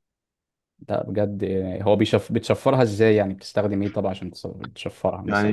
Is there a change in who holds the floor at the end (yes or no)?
yes